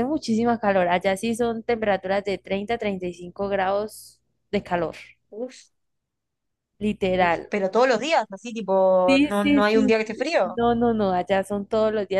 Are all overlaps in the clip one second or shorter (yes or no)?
no